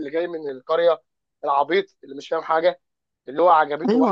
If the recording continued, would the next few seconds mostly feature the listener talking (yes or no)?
yes